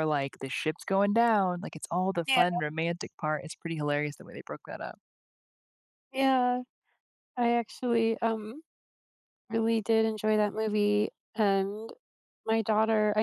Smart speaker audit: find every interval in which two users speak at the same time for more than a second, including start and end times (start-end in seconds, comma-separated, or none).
none